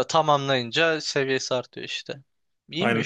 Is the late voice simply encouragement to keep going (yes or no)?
no